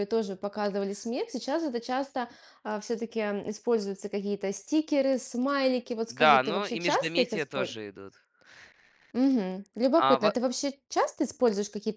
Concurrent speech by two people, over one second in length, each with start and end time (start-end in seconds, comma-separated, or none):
6.1-7.8